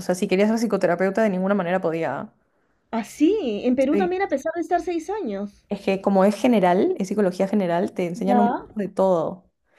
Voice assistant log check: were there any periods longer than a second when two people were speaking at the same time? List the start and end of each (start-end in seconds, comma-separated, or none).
none